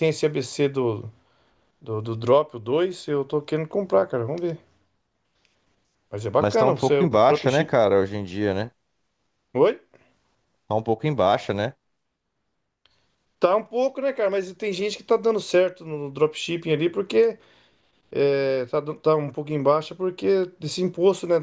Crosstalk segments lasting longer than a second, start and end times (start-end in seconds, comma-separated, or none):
6.4-7.8